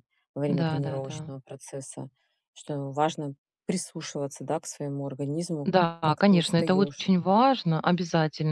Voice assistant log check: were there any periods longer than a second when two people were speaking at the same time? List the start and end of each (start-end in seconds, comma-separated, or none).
5.6-7.1